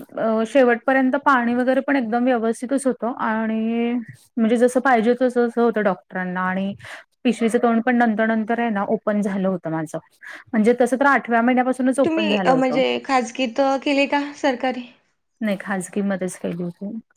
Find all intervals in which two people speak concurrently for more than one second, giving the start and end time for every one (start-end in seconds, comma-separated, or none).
none